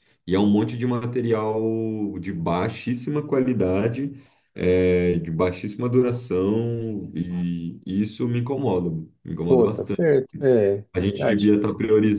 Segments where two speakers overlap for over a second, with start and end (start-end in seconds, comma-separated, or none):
none